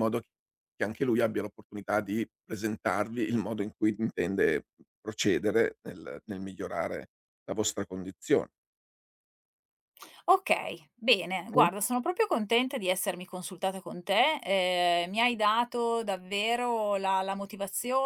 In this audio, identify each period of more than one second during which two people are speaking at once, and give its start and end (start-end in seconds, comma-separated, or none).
none